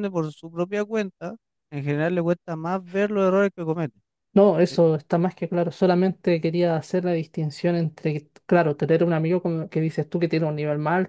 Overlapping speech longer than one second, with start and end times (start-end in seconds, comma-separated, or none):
none